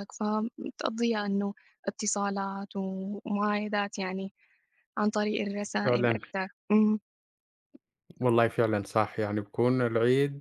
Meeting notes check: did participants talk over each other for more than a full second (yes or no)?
no